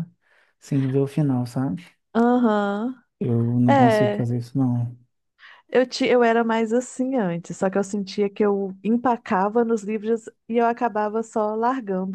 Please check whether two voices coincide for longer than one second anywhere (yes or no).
no